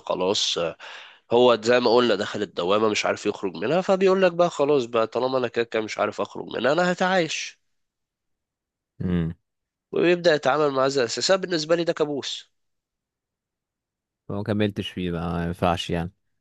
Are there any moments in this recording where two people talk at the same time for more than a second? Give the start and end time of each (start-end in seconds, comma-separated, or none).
none